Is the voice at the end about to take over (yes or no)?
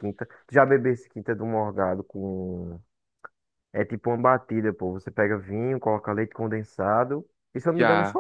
yes